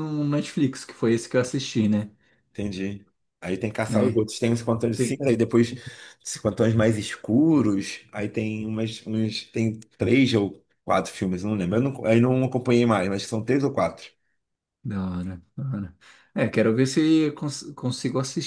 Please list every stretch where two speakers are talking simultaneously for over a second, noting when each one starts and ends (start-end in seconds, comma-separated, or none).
none